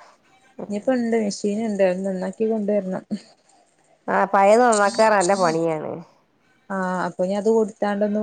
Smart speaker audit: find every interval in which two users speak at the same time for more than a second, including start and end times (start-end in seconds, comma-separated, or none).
none